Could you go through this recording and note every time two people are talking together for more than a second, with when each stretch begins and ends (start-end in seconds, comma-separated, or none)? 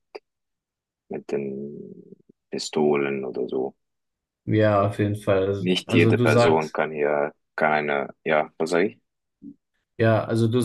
5.6-6.8